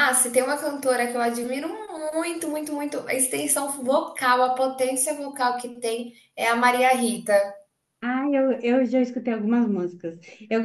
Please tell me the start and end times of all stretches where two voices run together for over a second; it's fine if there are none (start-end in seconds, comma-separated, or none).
none